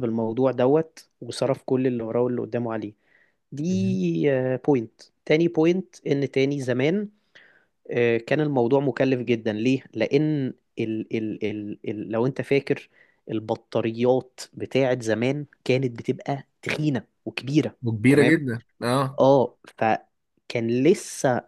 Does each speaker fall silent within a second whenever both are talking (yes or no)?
yes